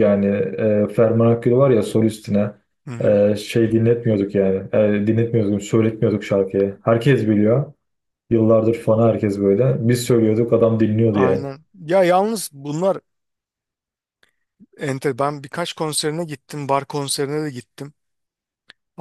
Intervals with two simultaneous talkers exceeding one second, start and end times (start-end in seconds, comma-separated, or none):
none